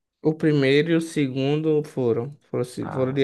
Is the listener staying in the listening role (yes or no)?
yes